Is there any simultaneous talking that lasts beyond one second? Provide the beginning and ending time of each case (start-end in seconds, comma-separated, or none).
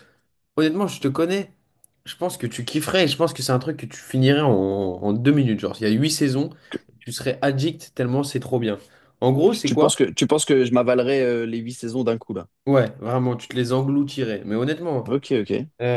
none